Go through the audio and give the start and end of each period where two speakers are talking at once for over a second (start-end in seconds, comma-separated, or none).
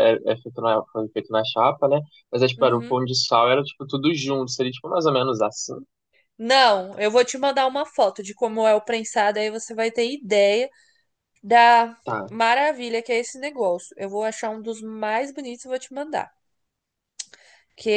none